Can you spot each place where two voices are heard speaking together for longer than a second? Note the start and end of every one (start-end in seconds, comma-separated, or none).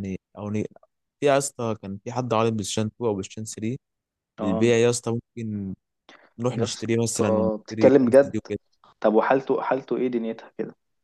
6.5-8.3